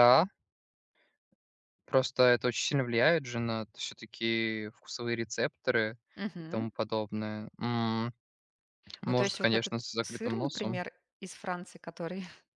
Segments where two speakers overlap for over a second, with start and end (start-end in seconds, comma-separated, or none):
9.0-10.8